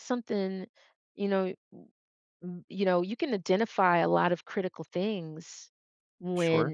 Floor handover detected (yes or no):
no